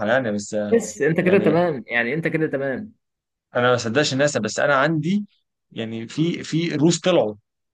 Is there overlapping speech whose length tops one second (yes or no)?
no